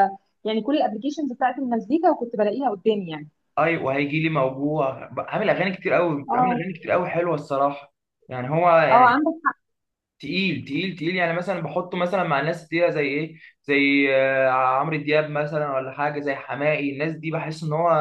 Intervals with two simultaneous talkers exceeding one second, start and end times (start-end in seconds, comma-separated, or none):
none